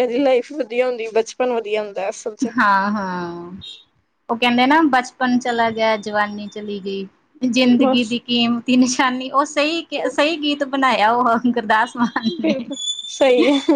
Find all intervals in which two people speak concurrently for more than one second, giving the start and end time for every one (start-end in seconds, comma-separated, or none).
none